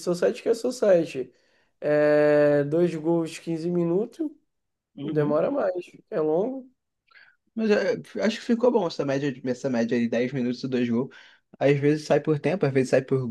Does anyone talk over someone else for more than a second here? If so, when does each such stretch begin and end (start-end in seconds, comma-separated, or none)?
none